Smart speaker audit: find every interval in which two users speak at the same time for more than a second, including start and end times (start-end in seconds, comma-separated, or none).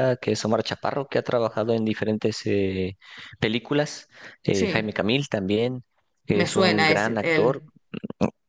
6.3-7.6